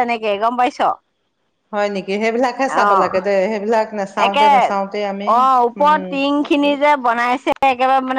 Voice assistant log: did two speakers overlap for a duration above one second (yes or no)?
no